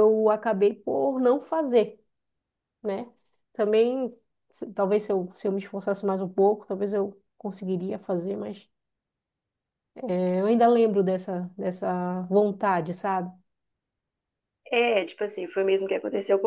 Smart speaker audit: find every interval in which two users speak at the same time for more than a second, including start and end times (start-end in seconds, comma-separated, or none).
none